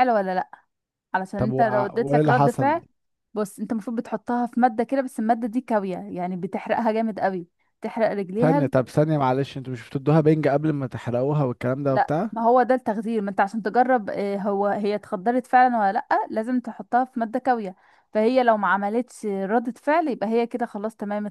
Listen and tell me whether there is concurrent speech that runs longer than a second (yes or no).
yes